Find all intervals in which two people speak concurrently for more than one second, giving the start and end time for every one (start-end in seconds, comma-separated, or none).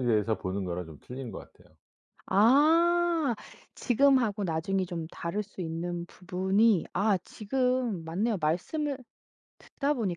none